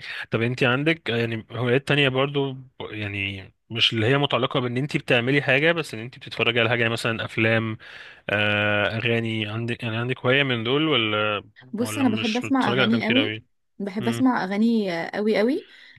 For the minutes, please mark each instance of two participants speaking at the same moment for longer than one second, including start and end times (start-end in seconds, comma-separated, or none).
11.8-13.4